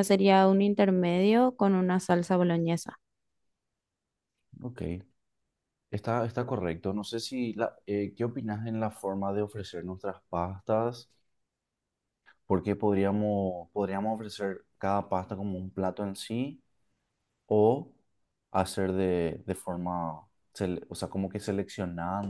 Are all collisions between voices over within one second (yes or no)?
yes